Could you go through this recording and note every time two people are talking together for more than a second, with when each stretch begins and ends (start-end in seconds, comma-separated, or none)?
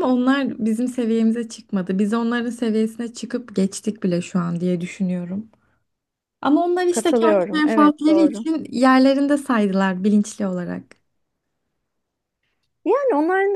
6.9-8.4